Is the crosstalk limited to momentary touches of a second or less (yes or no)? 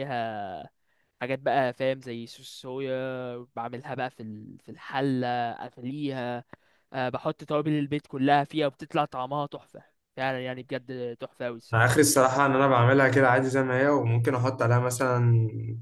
yes